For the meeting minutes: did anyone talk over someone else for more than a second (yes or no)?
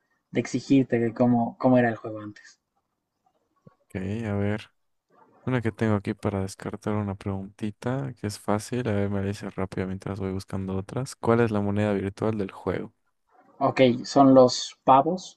no